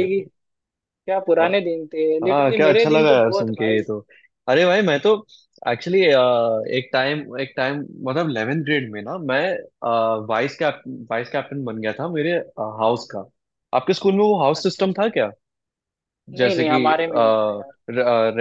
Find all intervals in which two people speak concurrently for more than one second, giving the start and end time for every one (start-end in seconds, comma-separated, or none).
2.2-3.8